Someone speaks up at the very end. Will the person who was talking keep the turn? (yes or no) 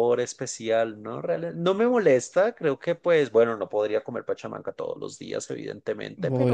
yes